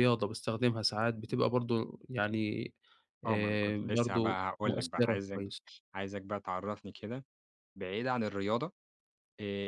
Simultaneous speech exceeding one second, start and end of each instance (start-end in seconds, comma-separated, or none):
3.2-5.4